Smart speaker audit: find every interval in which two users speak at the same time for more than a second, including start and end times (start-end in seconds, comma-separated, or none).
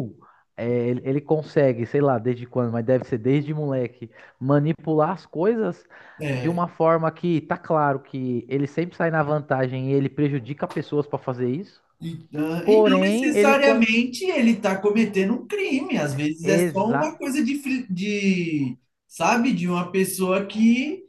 12.6-14.1